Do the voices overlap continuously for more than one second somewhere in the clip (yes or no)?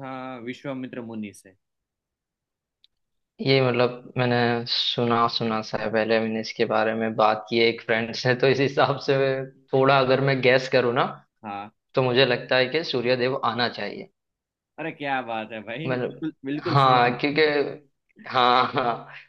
yes